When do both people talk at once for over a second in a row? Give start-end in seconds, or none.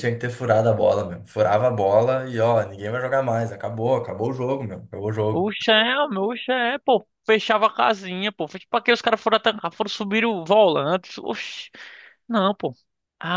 none